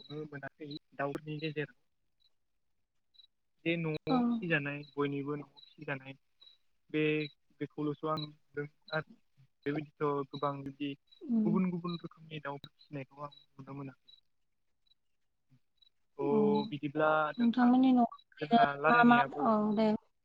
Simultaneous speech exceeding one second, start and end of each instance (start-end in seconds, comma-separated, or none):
17.4-19.5